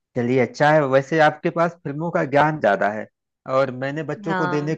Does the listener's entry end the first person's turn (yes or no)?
no